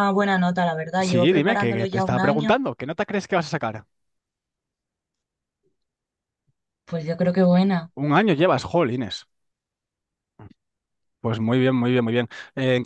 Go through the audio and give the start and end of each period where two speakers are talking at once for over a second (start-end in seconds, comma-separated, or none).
1.0-2.6